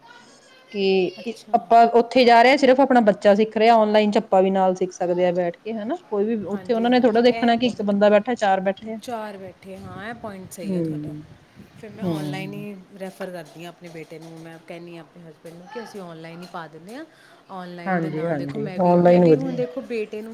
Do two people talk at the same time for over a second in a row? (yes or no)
yes